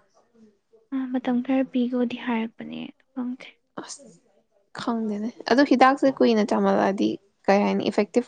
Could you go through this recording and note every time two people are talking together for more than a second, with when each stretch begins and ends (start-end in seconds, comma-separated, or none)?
none